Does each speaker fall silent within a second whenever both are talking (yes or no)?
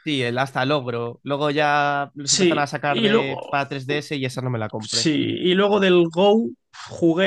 no